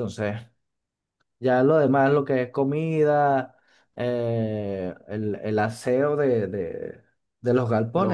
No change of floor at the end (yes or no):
yes